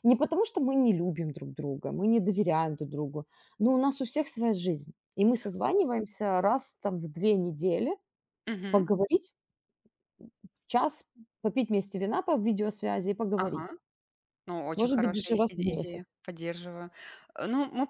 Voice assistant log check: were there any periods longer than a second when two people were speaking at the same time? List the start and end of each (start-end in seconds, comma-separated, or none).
14.8-16.0